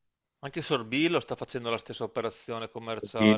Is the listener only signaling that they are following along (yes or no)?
no